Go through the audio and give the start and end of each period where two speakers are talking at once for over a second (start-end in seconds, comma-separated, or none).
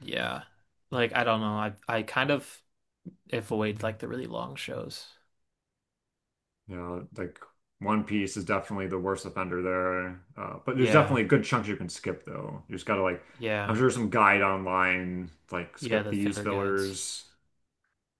15.8-17.0